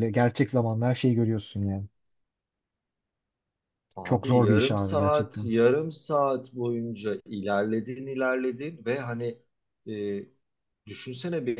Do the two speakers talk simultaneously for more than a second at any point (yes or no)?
yes